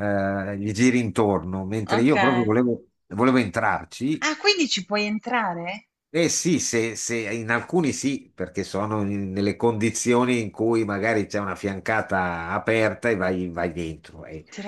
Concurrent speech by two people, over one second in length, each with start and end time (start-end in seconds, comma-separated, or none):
none